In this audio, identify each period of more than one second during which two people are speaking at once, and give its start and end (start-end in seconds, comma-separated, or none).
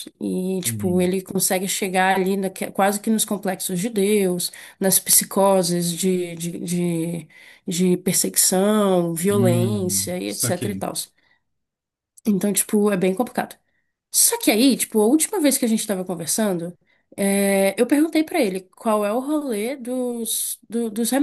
9.3-10.8